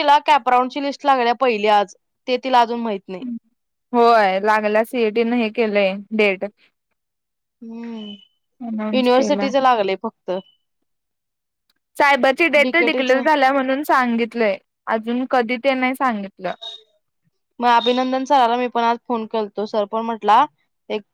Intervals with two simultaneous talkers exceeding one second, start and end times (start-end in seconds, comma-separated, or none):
none